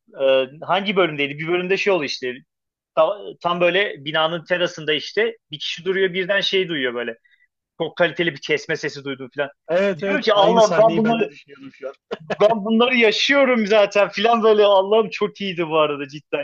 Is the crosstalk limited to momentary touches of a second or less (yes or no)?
no